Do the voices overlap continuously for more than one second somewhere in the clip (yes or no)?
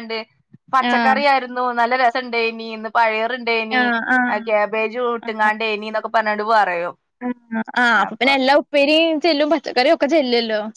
no